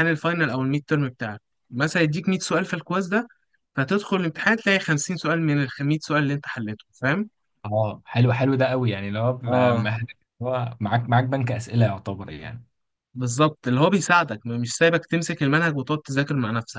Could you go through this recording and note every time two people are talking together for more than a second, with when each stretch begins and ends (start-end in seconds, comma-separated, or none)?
none